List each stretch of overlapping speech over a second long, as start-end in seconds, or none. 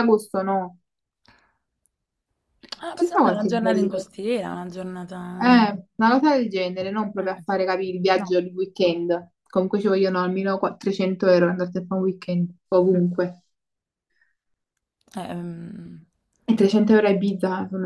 2.9-4.1